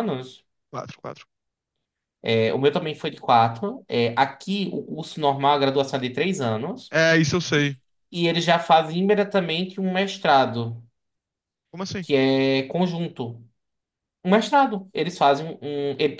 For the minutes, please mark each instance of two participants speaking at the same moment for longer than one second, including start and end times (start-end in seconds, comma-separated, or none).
none